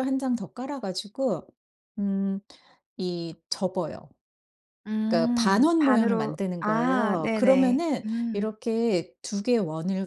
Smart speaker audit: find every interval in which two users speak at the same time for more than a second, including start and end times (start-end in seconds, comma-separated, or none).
5.1-8.5